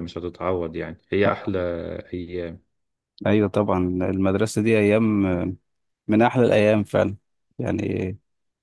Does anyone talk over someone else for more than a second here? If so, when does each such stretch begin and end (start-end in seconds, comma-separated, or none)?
none